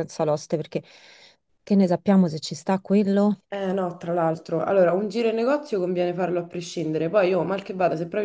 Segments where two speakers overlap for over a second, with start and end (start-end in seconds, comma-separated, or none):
none